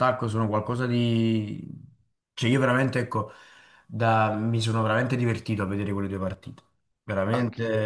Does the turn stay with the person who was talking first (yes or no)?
no